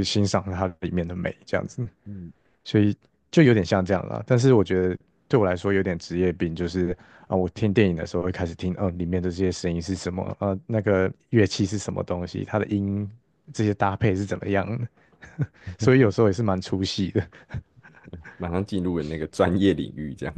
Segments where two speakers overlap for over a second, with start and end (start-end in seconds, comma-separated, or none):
none